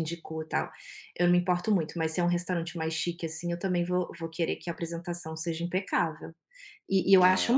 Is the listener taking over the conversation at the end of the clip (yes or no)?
no